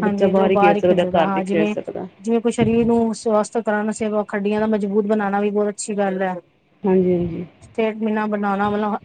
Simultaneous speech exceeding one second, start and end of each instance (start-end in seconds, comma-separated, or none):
none